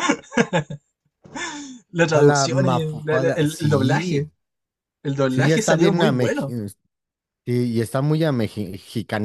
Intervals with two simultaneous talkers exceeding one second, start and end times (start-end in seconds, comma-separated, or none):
2.0-4.3, 5.3-6.5